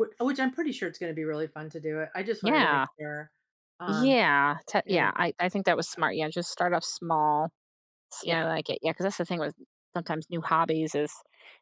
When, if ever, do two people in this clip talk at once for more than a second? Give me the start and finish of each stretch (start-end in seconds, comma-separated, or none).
none